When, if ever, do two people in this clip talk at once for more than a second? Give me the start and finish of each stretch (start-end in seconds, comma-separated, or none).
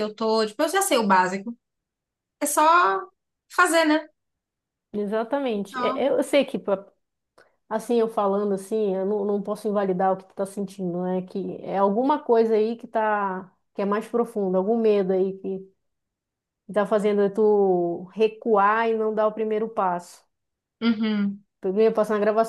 none